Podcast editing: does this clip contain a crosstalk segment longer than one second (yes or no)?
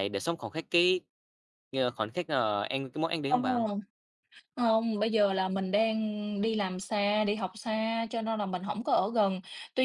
no